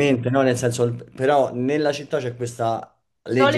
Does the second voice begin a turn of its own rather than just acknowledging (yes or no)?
yes